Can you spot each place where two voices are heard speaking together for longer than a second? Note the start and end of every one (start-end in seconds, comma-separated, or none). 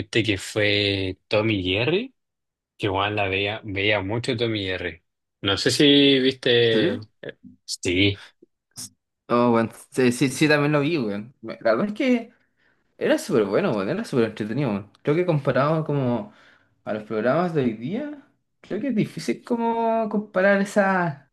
none